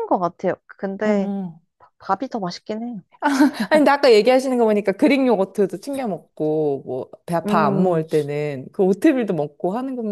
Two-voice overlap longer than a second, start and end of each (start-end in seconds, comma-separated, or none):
none